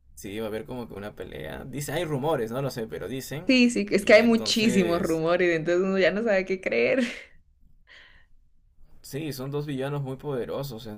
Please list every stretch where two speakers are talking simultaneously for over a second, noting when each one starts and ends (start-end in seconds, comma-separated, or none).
4.0-5.2